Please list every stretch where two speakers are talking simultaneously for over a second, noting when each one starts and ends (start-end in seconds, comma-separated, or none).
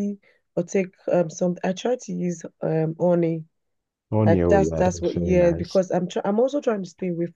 4.2-5.8